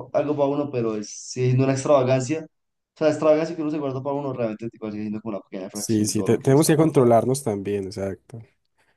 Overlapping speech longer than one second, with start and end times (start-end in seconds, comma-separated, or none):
5.7-7.2